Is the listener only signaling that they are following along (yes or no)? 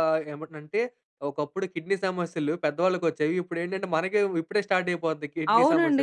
no